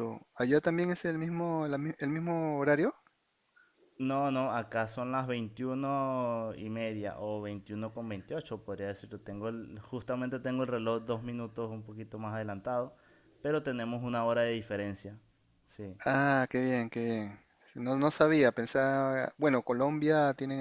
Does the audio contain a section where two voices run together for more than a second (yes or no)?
no